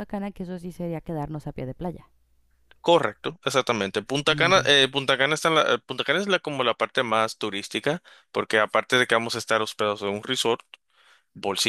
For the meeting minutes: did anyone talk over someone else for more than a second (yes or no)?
no